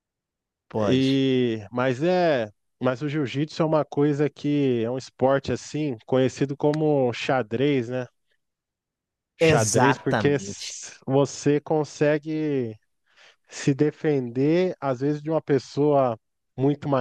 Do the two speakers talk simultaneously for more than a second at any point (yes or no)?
yes